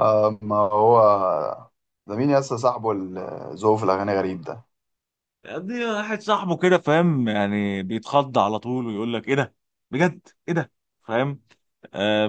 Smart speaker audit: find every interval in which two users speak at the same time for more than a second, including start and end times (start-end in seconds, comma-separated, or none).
none